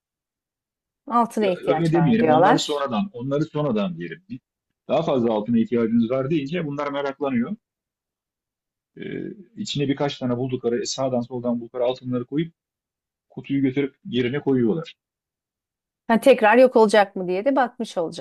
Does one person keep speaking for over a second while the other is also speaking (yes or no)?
yes